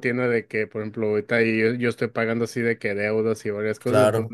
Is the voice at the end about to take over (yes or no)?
no